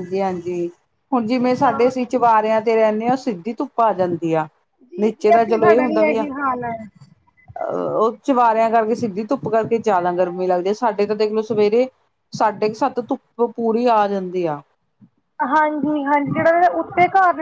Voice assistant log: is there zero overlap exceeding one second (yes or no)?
no